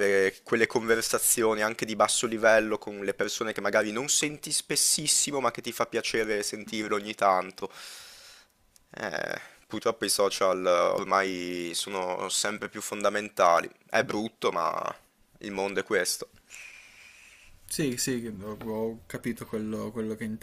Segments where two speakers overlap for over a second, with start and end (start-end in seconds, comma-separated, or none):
none